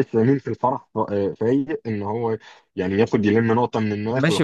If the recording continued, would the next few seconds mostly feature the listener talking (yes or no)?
yes